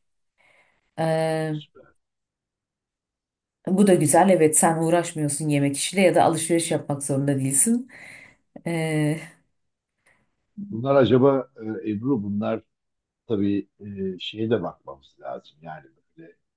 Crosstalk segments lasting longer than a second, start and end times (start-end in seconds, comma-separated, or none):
none